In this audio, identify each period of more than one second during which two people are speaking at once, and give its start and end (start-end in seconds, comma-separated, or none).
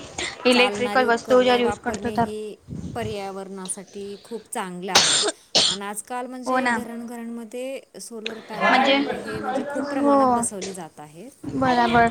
0.5-2.2